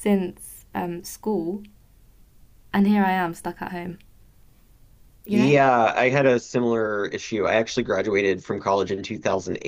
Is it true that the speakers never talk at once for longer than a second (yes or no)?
yes